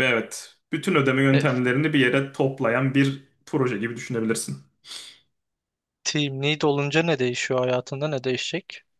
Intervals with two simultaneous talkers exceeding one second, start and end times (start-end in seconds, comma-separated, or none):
none